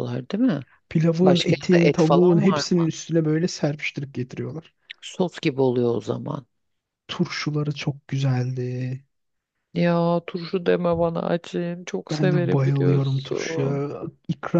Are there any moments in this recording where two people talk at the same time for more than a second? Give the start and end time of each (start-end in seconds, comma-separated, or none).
1.2-2.9, 12.1-13.8